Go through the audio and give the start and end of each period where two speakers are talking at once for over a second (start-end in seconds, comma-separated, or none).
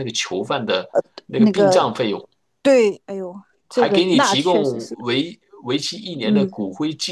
3.7-5.1